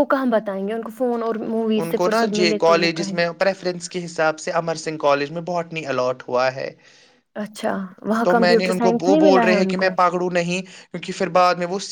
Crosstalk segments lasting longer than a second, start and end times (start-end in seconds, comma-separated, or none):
8.2-9.9